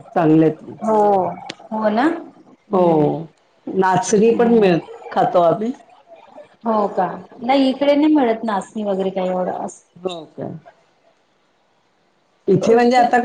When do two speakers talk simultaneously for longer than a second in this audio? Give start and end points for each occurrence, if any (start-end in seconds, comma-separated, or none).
none